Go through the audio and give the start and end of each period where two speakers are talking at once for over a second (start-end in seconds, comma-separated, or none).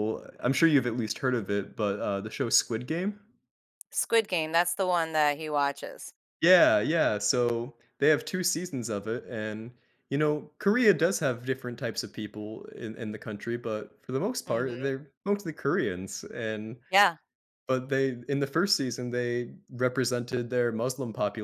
none